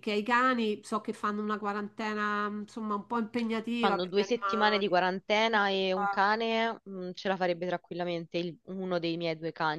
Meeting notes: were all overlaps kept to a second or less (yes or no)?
no